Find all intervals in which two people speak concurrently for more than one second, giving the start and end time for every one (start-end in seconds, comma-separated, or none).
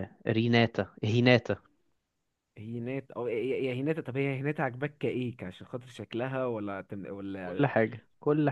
none